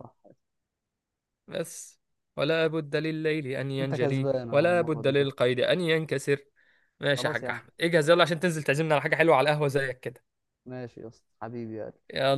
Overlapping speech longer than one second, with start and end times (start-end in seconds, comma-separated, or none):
3.8-5.3